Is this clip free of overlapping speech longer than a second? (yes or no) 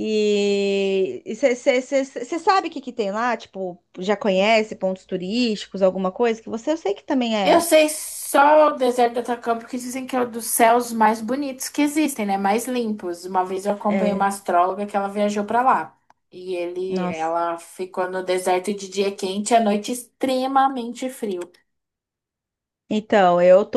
yes